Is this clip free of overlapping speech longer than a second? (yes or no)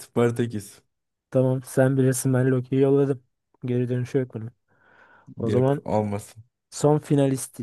yes